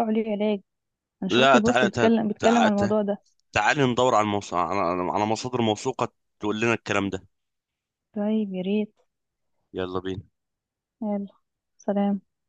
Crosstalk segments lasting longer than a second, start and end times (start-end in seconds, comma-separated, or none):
1.3-2.9